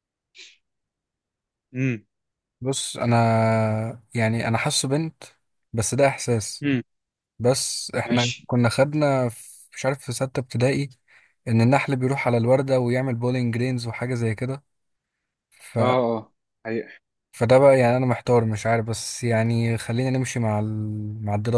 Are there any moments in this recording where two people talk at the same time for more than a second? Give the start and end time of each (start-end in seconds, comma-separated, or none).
none